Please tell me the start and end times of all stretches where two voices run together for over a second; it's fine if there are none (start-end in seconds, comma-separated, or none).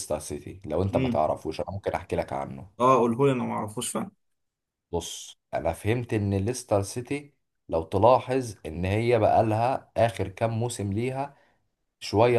none